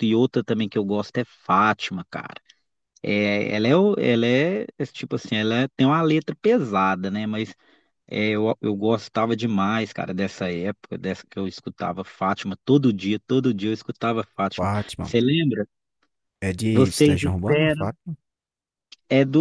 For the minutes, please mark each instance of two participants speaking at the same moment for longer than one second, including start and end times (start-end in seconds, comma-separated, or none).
16.7-17.9